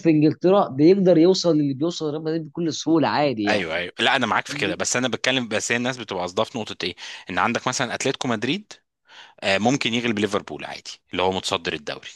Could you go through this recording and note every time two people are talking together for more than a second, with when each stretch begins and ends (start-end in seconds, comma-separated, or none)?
none